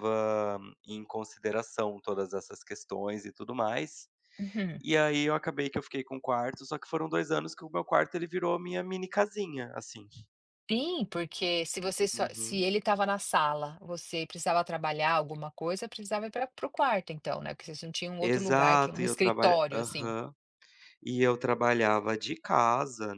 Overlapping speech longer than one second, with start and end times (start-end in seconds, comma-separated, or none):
18.2-20.1